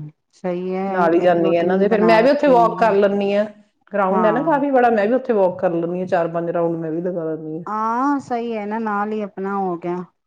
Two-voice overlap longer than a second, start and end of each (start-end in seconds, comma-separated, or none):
1.2-3.0